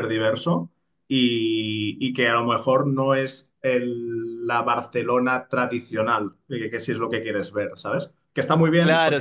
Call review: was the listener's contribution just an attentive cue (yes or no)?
no